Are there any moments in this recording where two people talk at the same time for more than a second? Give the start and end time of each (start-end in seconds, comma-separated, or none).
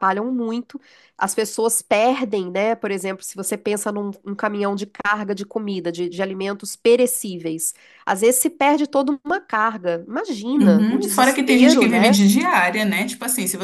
10.6-12.2